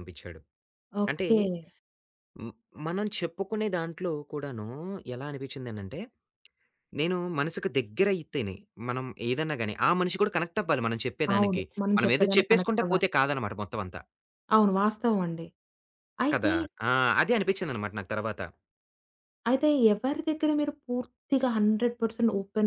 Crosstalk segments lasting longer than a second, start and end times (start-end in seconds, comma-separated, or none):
11.3-13.1